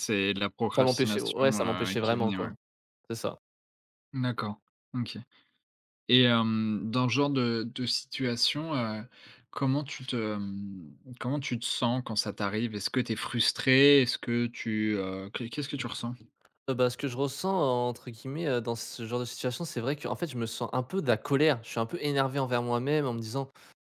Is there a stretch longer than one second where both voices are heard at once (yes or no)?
yes